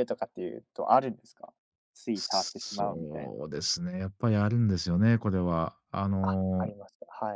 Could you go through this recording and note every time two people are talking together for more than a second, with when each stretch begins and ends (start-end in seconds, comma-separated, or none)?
2.1-3.4